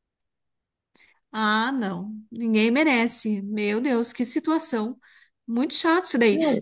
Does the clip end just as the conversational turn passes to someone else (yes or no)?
no